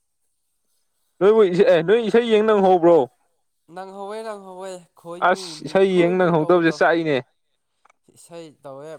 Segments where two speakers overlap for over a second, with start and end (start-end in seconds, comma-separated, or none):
5.2-6.8